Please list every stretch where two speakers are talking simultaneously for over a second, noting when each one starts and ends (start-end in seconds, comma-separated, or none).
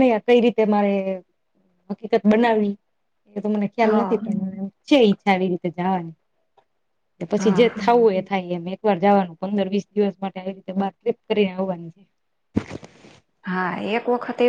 none